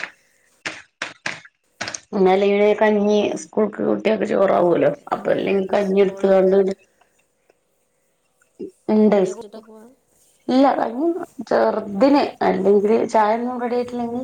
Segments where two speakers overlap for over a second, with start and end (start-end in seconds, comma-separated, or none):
4.6-6.6